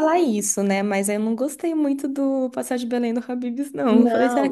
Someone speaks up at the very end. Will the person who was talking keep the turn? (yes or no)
no